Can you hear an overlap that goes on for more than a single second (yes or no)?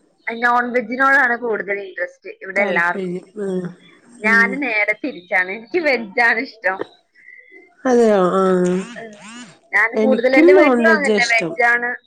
yes